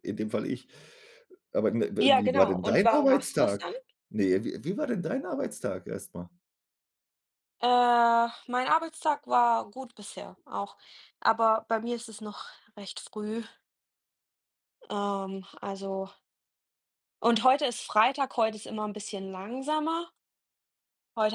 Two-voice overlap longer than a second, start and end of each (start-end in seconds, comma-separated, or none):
2.0-3.6